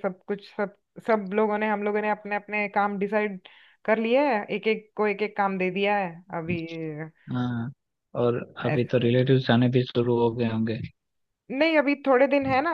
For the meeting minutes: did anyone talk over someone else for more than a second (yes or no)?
no